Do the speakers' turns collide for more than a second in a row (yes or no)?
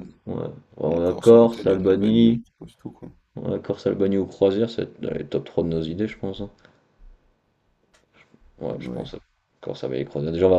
yes